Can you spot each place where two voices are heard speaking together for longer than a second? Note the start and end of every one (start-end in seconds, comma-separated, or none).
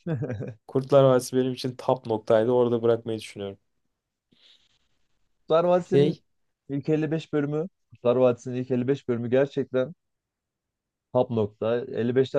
none